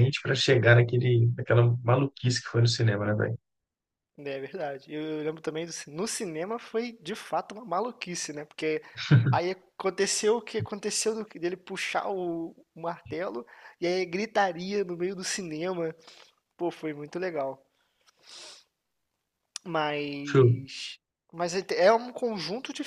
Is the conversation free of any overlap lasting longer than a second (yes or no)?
yes